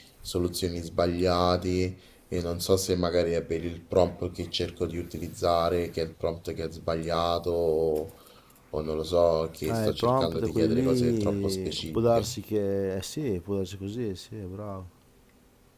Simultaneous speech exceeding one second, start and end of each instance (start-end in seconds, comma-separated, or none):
9.7-12.3